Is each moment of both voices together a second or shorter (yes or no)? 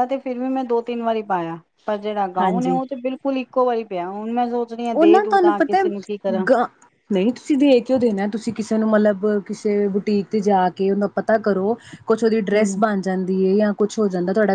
yes